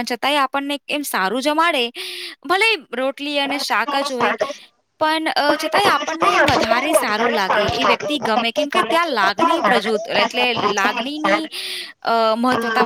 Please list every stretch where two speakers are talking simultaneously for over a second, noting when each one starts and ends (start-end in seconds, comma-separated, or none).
5.5-7.8